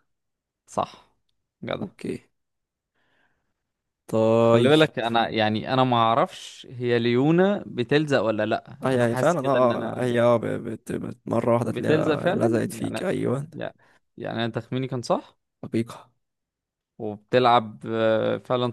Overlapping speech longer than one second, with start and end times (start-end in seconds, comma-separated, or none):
8.8-10.1, 11.7-13.1